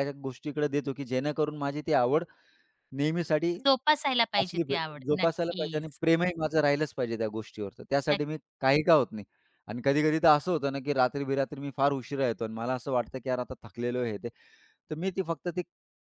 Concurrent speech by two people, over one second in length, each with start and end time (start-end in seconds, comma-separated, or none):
4.4-6.0